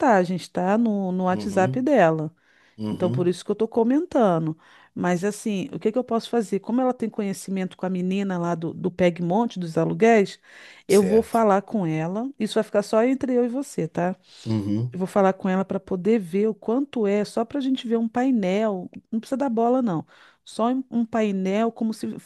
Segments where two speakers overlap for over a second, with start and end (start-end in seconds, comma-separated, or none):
none